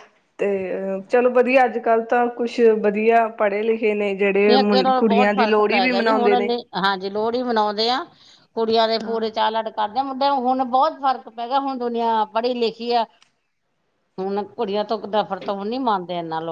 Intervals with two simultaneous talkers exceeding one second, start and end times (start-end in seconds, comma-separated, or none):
4.5-6.3